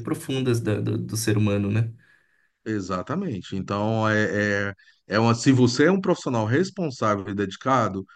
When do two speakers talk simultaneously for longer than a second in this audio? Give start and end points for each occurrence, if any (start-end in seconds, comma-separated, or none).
none